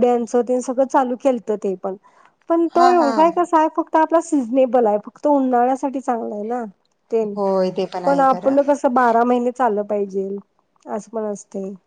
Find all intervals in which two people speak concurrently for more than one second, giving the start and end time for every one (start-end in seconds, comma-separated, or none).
none